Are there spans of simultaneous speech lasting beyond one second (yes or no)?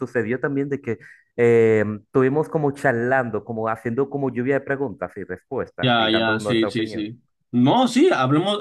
yes